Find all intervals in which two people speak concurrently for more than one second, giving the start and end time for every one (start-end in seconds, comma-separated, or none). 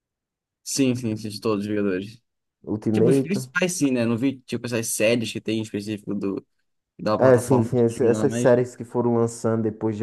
7.2-8.5